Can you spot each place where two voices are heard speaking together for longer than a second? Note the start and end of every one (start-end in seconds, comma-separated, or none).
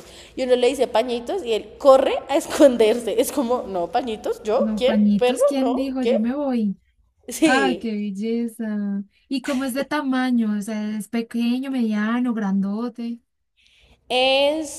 4.6-6.2